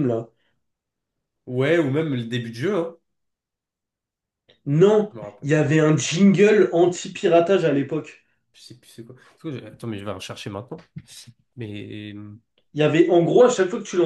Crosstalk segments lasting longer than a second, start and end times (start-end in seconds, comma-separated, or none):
none